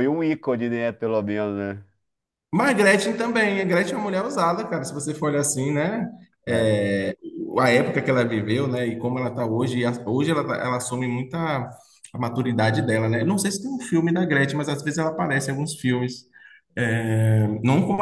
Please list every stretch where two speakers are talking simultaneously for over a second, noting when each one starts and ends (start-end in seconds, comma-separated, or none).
none